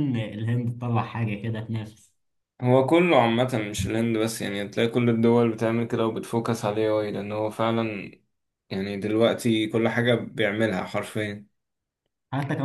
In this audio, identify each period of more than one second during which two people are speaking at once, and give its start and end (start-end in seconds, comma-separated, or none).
none